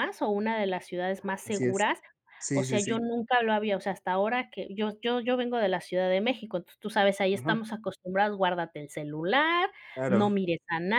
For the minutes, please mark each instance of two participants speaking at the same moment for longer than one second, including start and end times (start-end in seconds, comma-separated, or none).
none